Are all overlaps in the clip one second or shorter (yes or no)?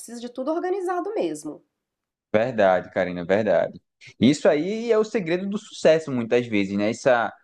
yes